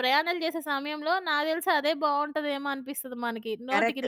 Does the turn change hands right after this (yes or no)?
yes